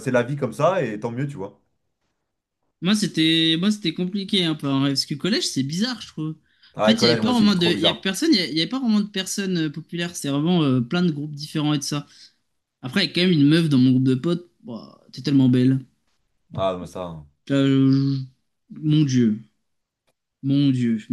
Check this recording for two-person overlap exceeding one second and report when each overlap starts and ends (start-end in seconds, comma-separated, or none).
6.8-8.1